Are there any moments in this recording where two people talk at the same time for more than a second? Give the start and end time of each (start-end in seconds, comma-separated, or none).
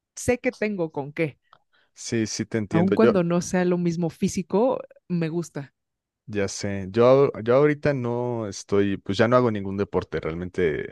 none